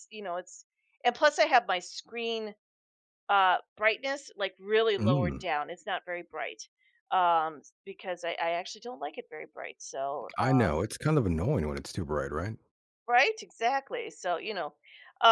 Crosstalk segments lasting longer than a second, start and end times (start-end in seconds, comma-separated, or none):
none